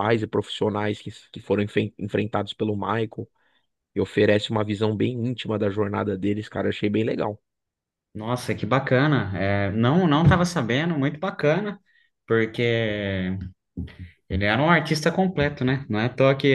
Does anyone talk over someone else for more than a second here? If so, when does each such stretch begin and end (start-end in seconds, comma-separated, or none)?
none